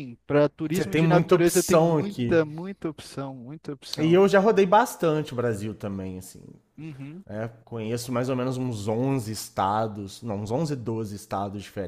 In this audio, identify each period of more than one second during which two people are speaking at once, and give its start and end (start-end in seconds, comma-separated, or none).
0.7-2.4